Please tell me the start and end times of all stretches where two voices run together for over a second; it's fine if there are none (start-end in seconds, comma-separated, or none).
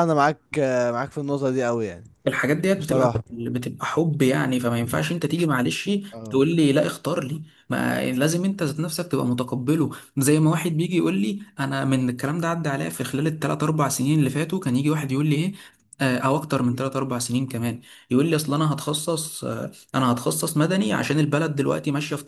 none